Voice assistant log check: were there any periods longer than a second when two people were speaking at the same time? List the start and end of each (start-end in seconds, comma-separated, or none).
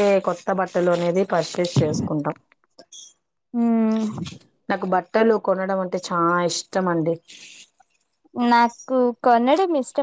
none